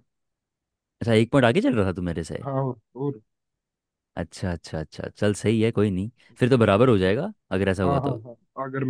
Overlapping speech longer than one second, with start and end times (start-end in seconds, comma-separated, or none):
none